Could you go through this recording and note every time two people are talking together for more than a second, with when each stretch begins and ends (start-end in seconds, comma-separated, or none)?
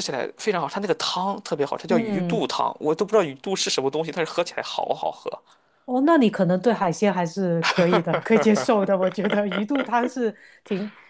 none